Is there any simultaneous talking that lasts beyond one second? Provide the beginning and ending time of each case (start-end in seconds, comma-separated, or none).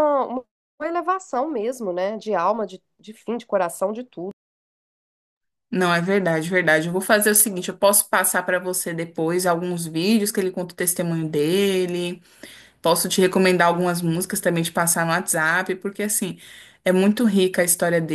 none